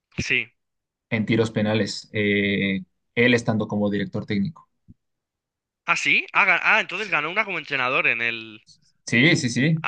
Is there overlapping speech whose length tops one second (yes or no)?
no